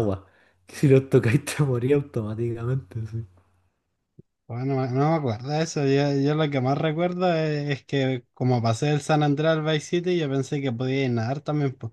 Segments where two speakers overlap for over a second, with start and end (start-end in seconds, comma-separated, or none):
none